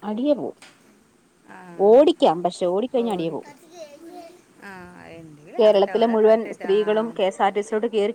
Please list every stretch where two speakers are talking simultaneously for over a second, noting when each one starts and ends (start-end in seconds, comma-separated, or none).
5.6-7.1